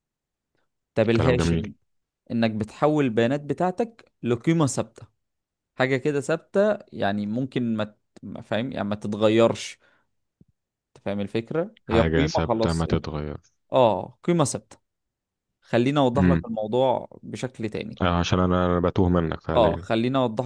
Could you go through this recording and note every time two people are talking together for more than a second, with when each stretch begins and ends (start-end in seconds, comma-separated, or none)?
11.9-13.1